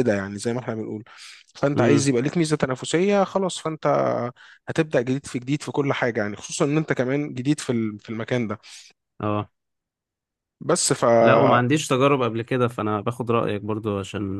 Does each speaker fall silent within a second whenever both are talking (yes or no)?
yes